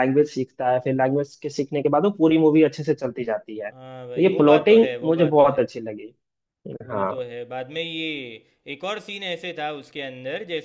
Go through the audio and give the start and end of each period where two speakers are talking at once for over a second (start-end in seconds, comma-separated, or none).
3.7-5.7